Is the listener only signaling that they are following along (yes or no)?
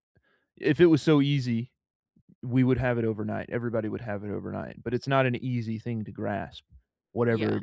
yes